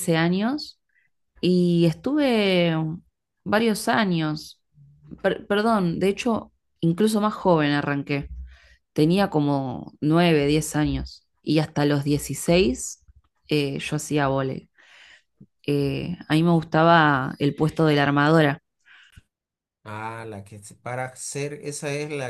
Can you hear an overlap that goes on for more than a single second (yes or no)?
no